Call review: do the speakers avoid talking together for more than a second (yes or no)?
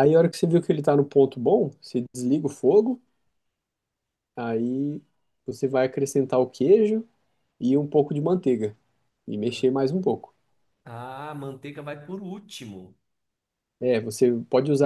yes